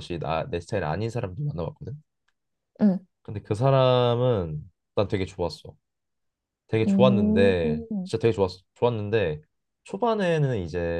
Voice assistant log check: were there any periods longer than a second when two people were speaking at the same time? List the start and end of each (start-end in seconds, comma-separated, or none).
6.9-8.1